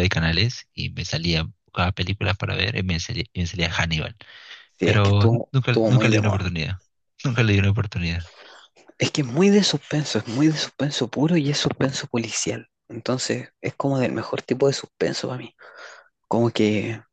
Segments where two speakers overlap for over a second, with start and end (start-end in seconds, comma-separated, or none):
4.8-6.5